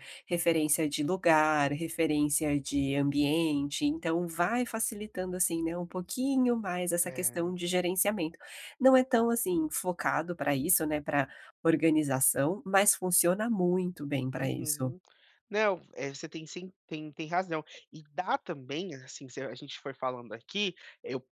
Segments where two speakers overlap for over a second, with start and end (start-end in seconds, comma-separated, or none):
none